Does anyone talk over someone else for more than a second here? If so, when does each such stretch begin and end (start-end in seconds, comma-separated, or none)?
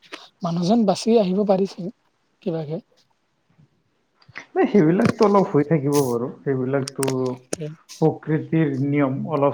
none